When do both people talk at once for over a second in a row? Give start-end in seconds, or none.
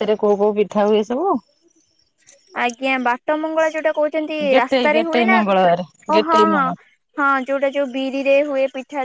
4.5-6.4